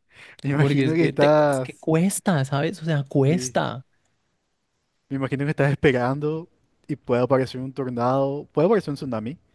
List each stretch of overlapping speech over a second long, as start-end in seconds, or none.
0.5-1.9